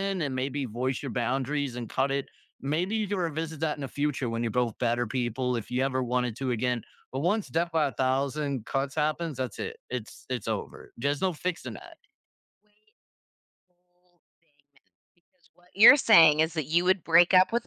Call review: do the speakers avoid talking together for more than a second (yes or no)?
yes